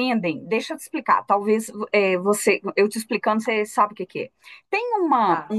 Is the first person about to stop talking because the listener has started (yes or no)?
no